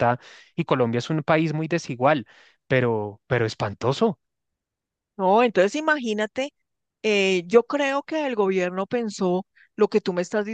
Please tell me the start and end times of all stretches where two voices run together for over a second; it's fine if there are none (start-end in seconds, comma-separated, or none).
none